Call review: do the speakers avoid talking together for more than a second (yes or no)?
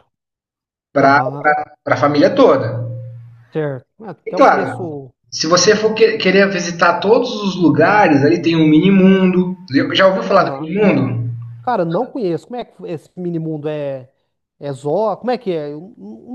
yes